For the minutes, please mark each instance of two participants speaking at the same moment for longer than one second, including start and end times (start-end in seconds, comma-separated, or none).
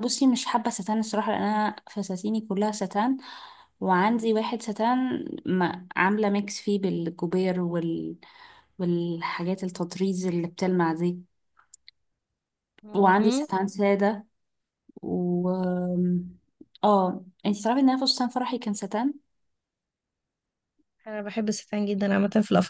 none